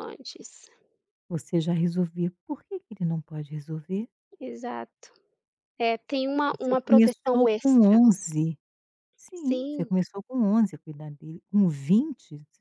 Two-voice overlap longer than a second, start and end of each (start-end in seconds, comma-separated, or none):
6.5-8.0